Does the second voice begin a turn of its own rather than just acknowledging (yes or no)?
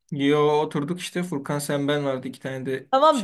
yes